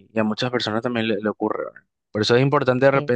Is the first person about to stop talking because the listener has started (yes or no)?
no